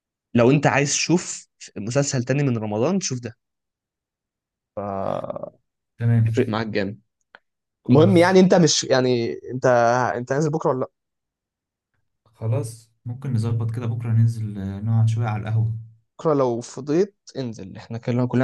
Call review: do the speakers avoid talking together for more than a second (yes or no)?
yes